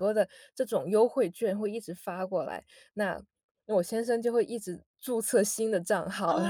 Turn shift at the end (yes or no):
yes